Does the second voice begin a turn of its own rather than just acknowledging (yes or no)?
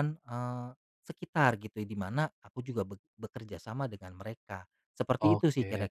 yes